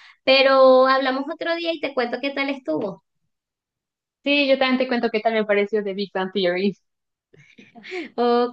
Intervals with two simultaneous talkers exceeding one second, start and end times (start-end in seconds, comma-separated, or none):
none